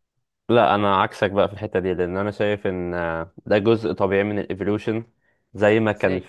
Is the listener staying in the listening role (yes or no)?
yes